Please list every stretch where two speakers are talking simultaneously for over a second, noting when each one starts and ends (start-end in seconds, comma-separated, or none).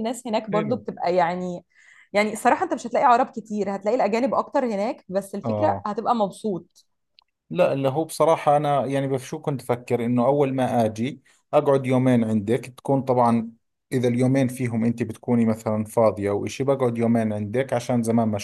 none